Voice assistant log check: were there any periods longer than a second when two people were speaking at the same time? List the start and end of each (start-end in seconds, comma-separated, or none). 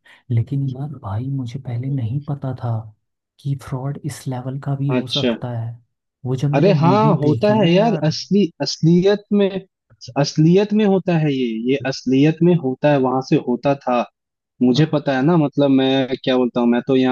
6.5-8.1